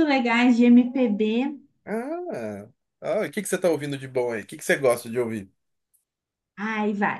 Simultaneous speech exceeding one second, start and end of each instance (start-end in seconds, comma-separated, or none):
none